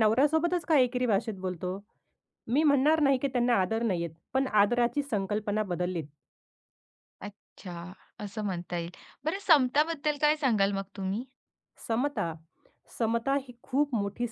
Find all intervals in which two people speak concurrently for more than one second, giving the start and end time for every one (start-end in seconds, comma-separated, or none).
none